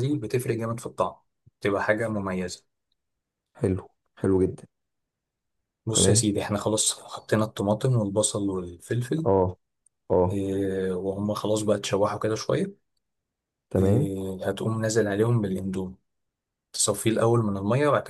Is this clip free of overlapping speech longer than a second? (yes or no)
yes